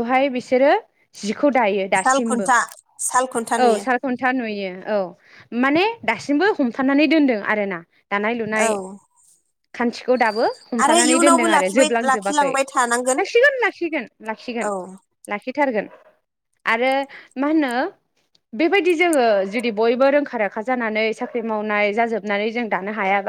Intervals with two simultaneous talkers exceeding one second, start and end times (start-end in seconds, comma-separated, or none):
10.8-12.5